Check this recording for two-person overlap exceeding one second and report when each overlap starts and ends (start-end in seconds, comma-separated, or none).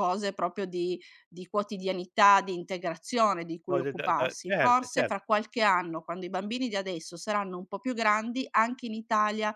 3.7-5.2